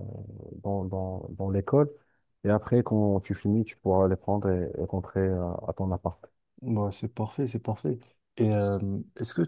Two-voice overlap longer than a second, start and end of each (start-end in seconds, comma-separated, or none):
none